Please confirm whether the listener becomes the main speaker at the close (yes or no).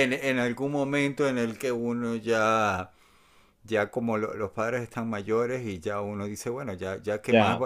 no